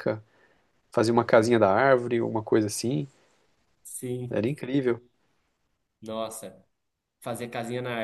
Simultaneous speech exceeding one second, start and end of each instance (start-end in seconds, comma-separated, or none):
none